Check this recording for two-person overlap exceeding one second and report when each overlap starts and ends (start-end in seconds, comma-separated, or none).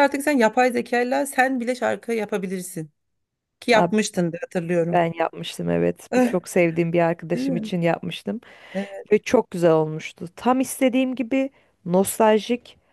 none